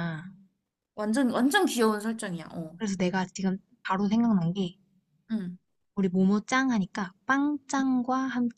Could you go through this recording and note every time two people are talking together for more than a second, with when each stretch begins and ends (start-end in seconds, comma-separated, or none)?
none